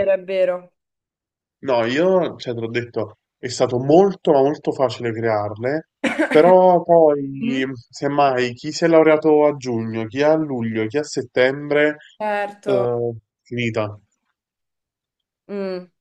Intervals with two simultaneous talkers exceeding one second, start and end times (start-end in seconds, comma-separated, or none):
none